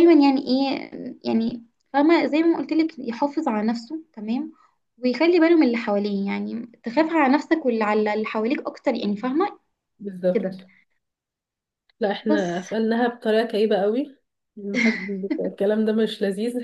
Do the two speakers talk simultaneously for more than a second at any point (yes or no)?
no